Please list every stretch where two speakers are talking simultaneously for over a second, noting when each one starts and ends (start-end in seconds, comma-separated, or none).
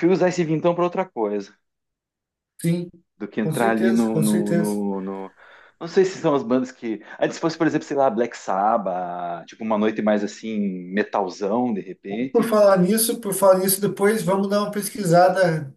3.4-4.8